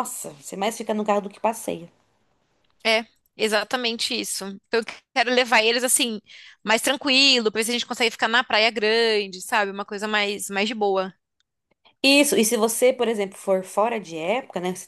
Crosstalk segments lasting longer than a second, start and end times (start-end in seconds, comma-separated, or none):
none